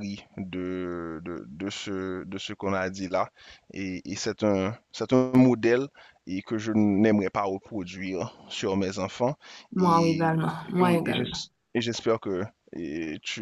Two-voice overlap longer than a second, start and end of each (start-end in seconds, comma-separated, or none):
9.8-11.4